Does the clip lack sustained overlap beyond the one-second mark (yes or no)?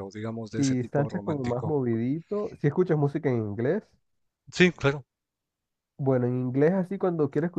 no